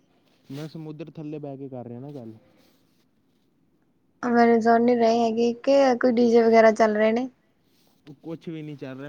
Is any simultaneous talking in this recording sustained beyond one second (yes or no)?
no